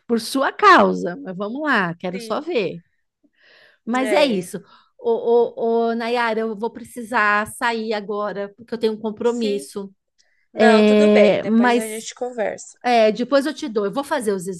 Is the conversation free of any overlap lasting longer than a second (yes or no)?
no